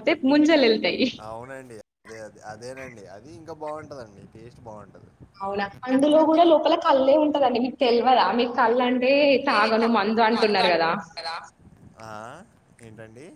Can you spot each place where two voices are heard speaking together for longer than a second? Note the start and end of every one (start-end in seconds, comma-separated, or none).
none